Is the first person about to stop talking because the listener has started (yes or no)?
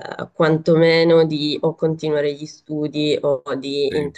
no